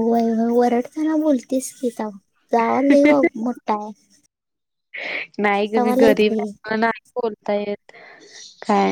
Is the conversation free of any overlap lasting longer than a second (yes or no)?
yes